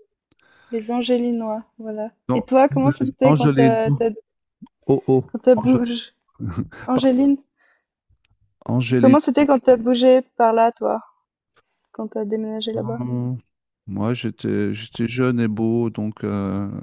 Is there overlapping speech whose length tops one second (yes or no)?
yes